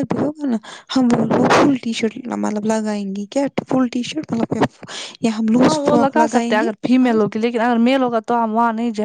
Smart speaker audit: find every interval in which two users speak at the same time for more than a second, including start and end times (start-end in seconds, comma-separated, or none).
5.6-7.1